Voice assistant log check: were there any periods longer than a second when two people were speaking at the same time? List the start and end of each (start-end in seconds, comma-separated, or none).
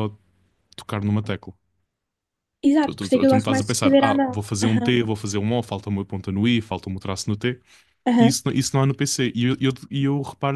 2.8-4.9